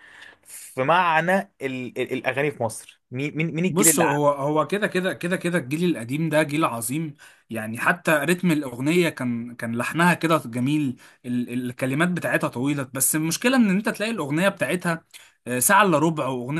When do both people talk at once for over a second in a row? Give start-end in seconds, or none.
none